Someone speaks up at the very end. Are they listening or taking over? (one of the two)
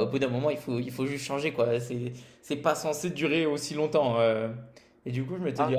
listening